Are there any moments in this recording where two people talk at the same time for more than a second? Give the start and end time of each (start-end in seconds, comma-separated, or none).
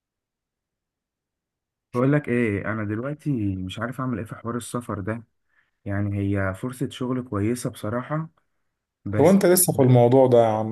none